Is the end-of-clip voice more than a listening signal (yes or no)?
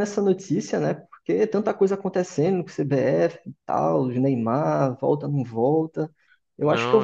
no